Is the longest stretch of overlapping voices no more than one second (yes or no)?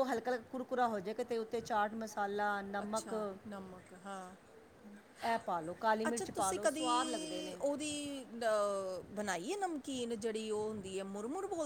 yes